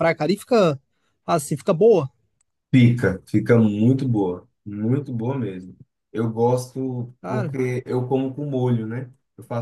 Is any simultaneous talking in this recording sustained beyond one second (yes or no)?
no